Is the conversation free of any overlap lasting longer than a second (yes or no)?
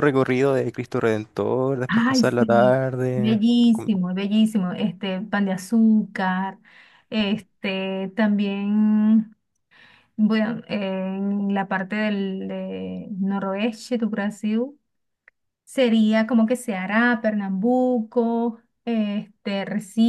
no